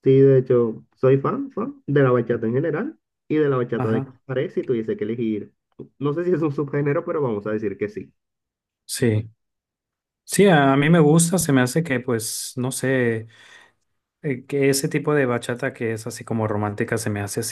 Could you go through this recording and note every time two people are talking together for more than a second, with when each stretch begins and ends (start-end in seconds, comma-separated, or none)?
none